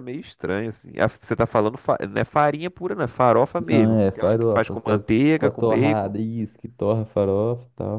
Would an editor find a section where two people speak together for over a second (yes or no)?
yes